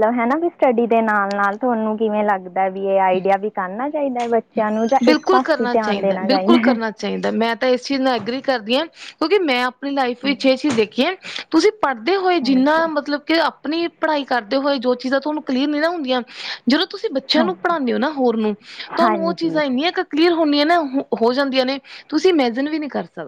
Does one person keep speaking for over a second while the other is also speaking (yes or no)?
yes